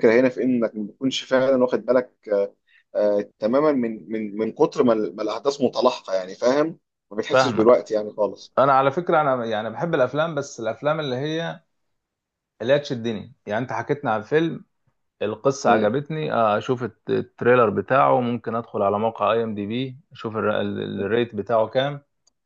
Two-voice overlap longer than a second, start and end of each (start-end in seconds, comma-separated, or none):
none